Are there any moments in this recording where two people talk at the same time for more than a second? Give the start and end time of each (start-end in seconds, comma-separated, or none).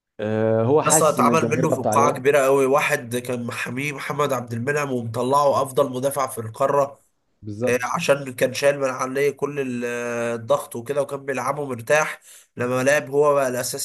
0.8-2.3